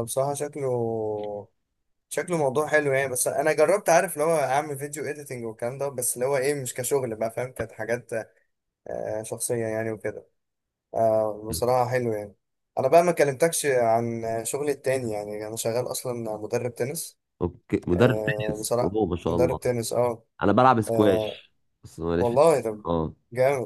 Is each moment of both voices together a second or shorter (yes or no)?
no